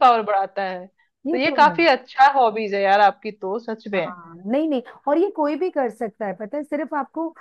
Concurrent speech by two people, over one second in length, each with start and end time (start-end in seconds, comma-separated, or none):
none